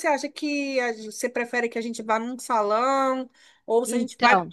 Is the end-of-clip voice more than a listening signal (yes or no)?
no